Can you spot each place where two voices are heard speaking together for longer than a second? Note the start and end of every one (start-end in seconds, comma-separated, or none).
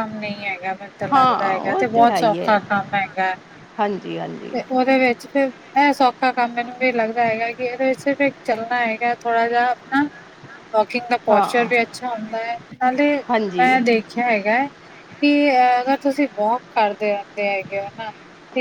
1.1-2.6